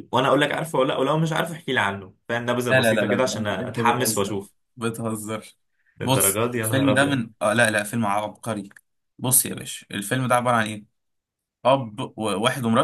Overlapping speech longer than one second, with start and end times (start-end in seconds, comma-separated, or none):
2.7-4.4, 6.0-7.2